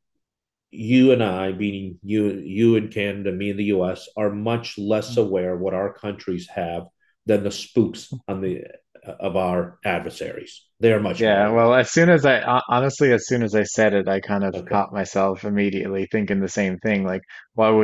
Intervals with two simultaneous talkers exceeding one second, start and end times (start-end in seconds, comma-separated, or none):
none